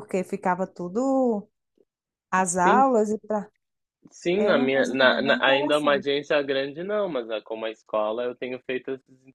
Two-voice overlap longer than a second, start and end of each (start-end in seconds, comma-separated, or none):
4.3-6.1